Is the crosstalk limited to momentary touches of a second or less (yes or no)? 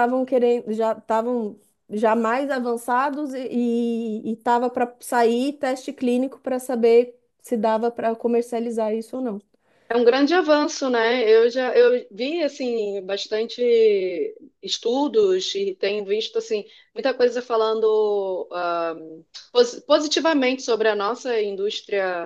yes